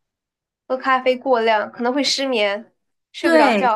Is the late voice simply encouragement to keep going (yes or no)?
no